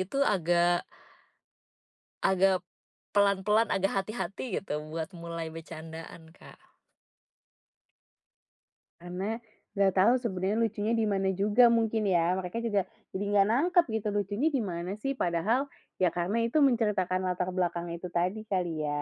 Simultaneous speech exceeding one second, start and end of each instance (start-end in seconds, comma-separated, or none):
none